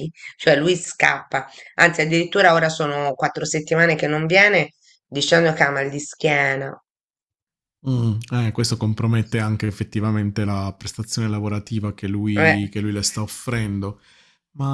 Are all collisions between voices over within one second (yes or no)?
yes